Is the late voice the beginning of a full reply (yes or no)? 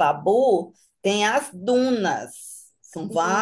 no